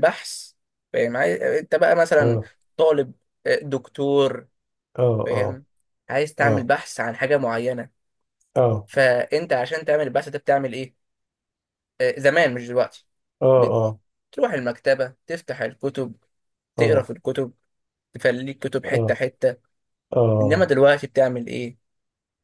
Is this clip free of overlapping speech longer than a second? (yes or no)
yes